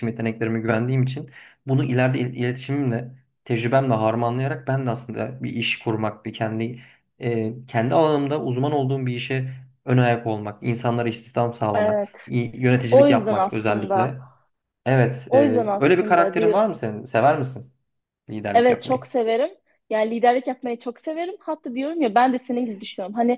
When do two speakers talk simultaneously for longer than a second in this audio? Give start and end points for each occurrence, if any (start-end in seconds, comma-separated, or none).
12.9-14.2, 15.3-16.6